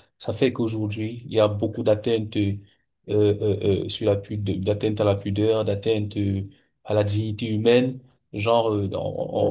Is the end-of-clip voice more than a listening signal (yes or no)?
no